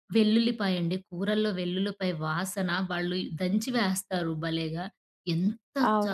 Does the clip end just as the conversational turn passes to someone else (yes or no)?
yes